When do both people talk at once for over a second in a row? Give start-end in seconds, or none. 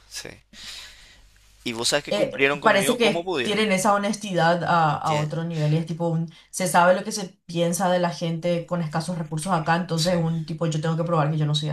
2.1-3.6